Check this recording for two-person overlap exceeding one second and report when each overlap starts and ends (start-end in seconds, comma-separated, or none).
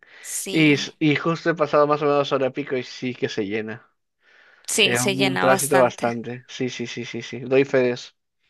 4.8-6.2